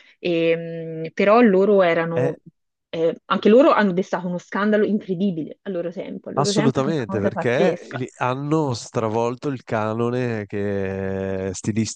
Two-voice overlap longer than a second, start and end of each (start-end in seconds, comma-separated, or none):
6.3-8.0